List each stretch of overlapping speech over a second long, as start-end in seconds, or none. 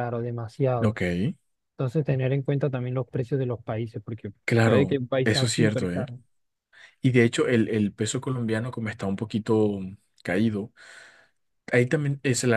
4.4-6.0